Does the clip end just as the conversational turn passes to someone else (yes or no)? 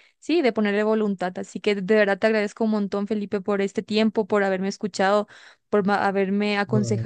no